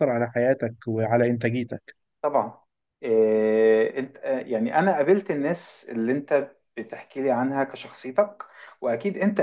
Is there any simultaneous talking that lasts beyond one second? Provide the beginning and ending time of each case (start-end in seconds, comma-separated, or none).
none